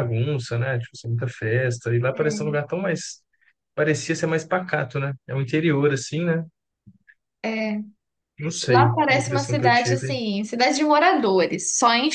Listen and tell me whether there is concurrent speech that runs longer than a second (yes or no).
yes